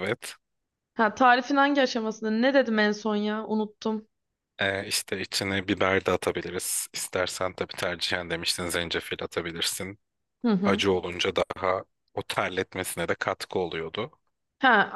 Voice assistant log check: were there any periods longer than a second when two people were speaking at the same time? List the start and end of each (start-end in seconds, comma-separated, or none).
none